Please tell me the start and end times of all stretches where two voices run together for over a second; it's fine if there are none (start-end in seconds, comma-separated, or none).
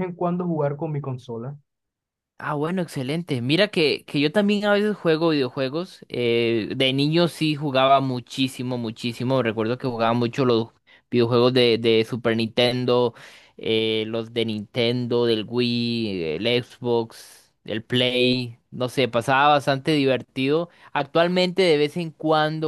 none